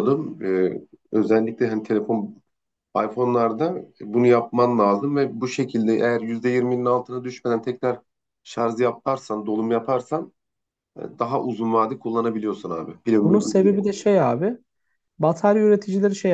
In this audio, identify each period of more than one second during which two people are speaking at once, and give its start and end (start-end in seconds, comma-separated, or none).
none